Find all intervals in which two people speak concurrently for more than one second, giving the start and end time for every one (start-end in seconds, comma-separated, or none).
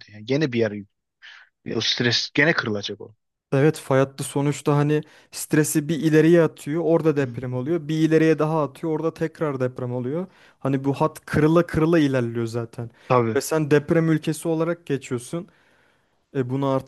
none